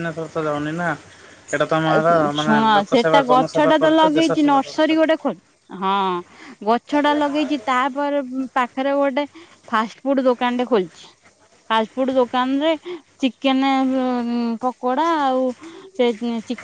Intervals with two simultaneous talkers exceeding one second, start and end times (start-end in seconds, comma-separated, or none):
1.9-4.8